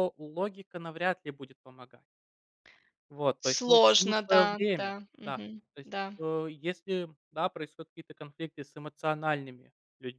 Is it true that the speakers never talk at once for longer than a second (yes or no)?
no